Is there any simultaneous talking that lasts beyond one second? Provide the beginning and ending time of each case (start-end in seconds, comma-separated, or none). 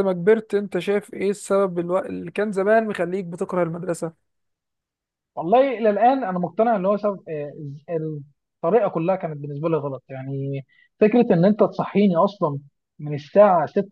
none